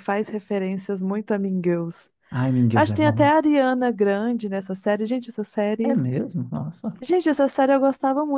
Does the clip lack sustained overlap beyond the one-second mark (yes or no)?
yes